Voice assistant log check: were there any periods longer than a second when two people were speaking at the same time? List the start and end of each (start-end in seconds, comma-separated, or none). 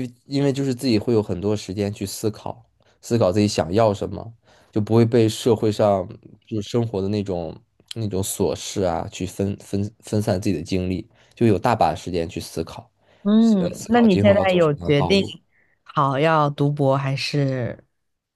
13.6-15.2